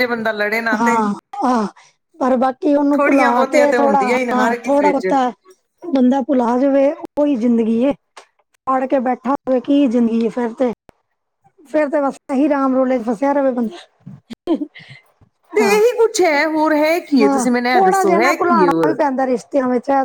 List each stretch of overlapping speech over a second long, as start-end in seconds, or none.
3.0-5.1, 17.2-19.0